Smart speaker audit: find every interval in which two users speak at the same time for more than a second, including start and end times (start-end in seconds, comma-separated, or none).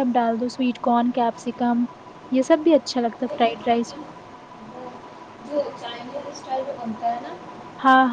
none